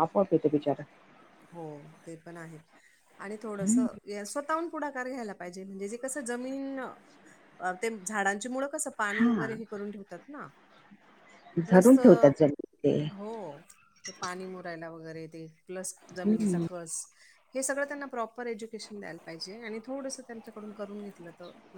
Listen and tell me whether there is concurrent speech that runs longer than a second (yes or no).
no